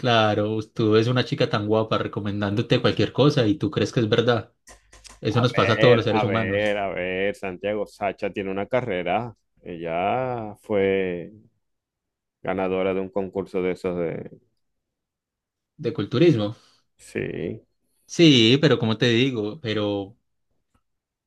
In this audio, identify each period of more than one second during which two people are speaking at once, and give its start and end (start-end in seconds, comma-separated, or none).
5.3-6.7